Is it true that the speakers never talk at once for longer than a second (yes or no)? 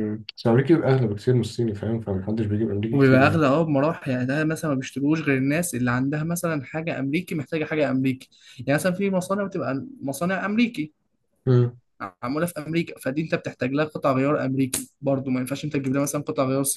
yes